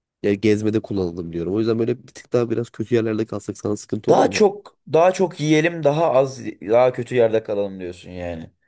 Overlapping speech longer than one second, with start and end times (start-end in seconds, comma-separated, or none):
none